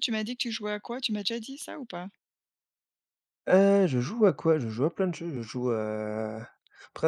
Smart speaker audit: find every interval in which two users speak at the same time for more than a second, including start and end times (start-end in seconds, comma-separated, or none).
none